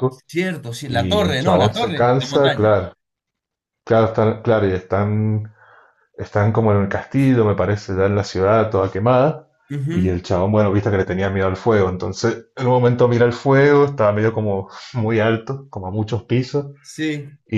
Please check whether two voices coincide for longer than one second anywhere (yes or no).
yes